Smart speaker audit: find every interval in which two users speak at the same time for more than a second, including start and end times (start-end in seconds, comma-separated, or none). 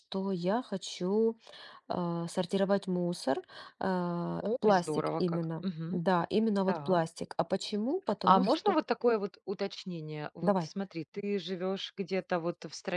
4.4-6.0